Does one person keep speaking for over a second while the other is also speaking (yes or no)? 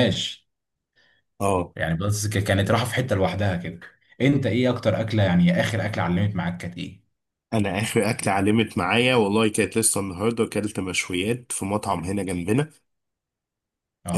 no